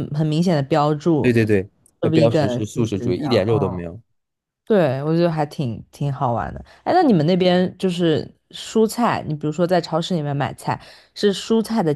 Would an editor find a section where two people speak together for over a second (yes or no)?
yes